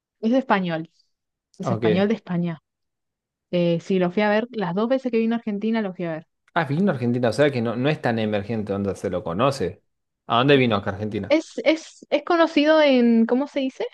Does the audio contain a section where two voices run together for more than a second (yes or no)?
no